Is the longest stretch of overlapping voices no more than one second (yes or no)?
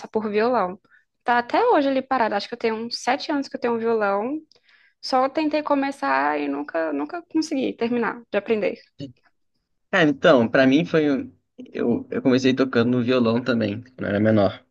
yes